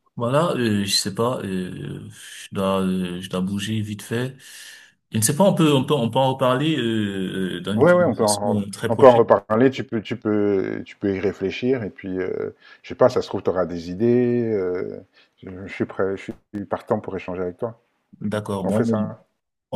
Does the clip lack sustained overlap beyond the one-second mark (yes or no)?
no